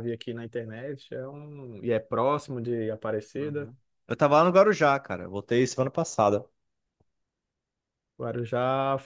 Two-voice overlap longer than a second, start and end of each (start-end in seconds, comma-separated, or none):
none